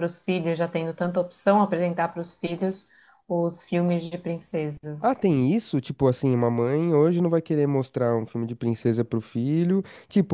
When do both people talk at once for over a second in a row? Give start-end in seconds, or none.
none